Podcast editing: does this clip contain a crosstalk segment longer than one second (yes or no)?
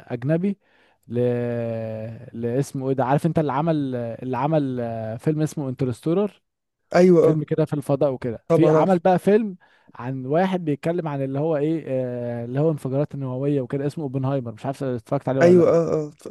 no